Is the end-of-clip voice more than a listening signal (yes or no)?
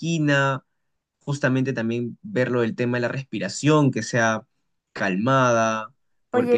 yes